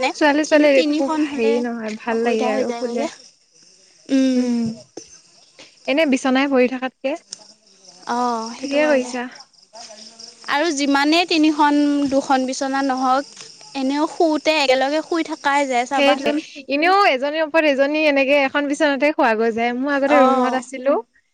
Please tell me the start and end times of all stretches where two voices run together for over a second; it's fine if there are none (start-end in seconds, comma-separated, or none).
0.5-3.0